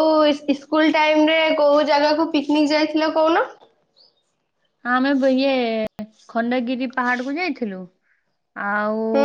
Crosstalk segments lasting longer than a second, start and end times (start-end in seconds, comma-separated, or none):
none